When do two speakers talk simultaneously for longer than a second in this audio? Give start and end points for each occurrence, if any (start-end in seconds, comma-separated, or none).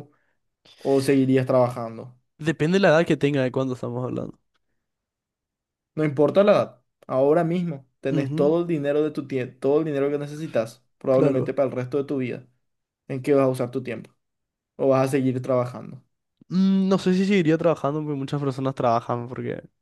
none